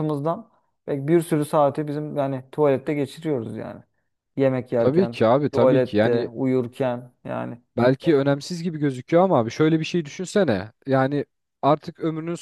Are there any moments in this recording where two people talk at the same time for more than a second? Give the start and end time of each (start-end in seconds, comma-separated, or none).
4.8-6.3